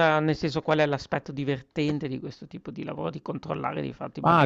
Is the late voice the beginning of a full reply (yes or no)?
yes